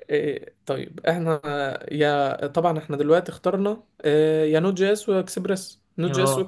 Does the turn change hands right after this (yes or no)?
no